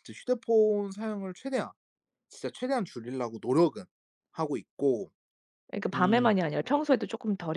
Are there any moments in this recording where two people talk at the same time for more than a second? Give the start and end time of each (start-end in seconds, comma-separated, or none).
none